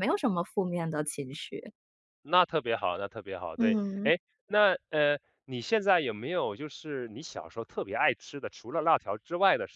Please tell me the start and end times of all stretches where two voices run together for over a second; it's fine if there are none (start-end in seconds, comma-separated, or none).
none